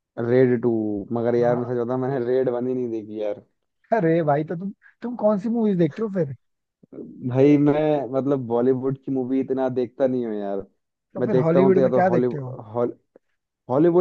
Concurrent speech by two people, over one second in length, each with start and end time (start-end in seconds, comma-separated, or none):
11.2-12.6